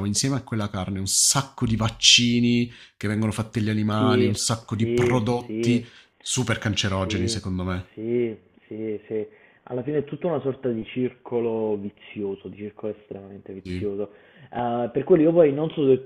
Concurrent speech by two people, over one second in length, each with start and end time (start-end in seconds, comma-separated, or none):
4.0-5.8